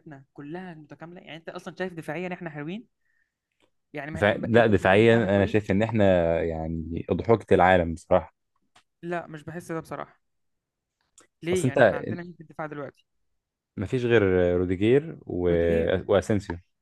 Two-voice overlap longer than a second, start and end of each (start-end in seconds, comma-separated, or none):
4.1-5.7